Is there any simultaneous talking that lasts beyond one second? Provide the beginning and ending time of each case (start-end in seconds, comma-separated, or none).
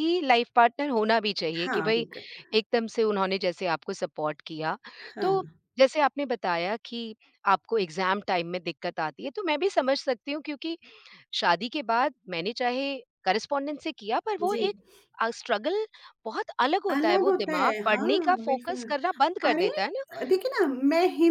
16.9-18.8